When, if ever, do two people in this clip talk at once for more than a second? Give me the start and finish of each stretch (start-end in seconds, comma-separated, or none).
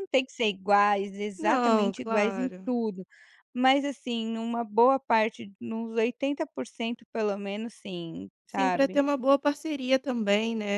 1.4-2.7